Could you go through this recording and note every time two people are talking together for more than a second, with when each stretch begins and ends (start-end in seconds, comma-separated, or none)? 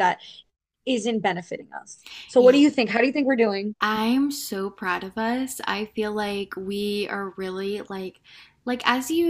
none